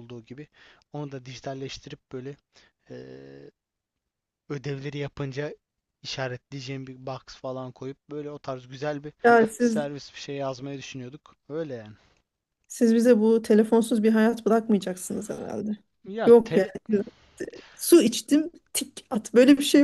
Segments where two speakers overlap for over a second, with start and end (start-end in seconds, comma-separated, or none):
none